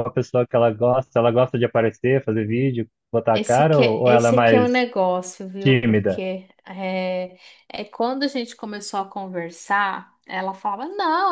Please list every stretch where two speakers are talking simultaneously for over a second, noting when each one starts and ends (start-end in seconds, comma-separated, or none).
3.3-4.7